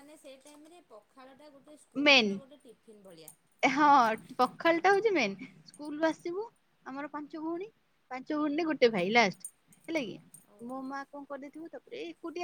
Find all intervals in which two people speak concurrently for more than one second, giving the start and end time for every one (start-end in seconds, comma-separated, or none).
none